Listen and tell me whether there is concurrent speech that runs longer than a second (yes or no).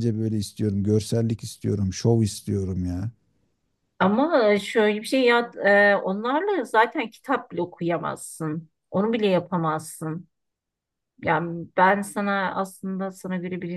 no